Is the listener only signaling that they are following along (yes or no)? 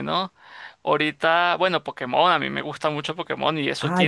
no